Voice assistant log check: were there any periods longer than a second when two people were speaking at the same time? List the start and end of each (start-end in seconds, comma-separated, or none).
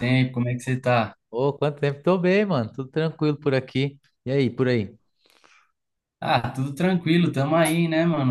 none